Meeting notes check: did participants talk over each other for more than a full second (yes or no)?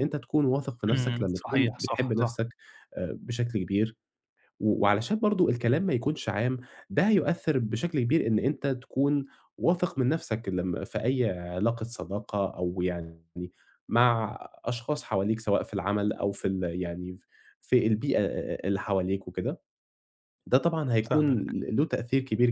yes